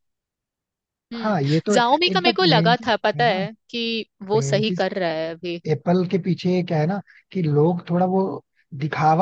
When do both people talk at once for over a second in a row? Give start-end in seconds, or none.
1.2-3.4